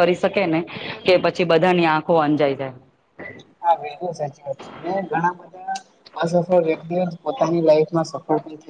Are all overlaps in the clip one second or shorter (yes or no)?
yes